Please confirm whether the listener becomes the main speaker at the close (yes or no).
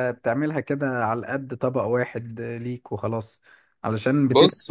no